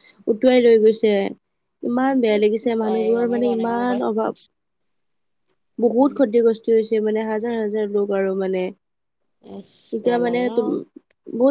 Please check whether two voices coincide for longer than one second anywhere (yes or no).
yes